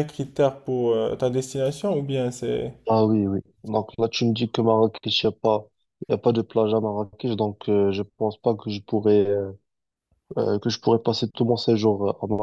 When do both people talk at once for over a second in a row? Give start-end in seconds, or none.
none